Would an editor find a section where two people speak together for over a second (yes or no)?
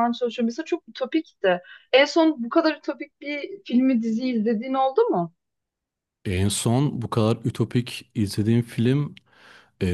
no